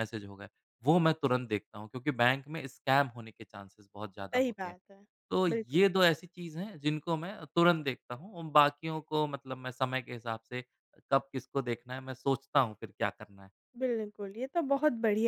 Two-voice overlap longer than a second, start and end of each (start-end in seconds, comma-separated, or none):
none